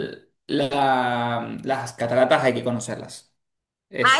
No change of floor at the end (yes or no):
no